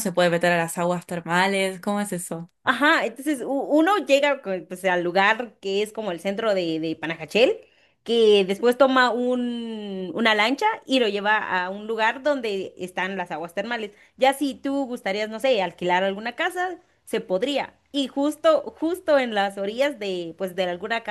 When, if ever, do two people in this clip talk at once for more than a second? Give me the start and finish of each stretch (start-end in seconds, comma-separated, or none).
none